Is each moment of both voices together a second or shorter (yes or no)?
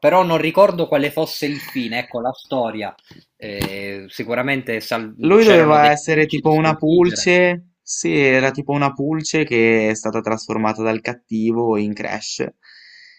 no